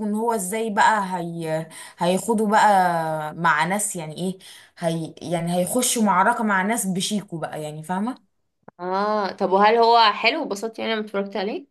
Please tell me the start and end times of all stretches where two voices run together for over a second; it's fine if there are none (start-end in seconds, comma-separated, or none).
none